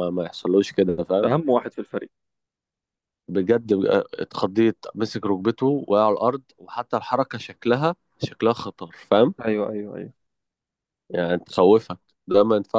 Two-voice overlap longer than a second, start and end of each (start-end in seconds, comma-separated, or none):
none